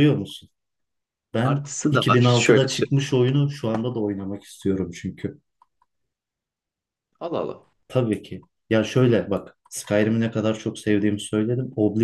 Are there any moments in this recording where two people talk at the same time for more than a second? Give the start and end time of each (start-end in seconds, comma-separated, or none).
1.4-3.0